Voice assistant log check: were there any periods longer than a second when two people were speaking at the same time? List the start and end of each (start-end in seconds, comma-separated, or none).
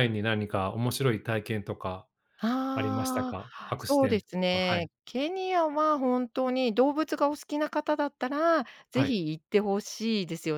2.7-4.8